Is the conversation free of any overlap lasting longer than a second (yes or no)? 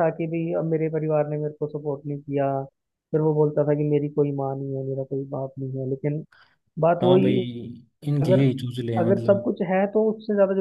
yes